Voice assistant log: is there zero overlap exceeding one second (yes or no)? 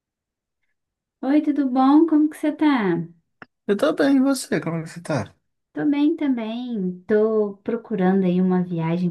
yes